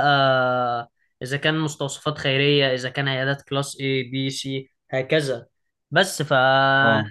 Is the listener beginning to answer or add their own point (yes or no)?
no